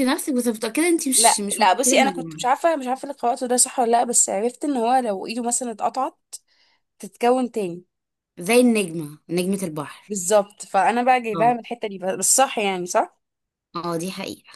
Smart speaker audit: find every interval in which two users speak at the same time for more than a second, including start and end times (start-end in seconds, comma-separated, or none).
1.1-2.4